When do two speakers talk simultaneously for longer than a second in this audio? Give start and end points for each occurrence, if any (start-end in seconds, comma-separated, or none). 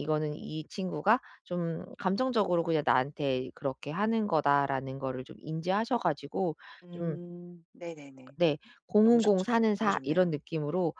9.0-10.3